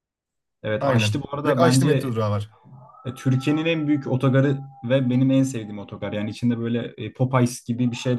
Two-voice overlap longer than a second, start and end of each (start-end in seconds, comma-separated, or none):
0.8-2.2